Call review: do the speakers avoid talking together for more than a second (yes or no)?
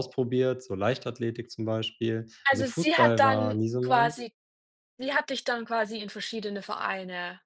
no